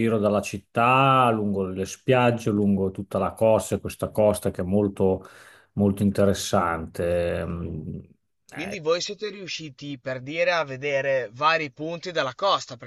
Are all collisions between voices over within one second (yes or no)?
yes